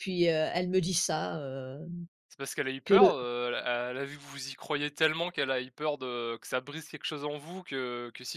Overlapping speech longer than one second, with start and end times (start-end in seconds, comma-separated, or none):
none